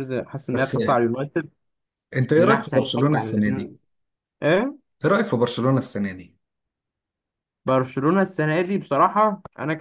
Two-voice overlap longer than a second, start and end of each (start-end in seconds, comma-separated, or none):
2.4-3.7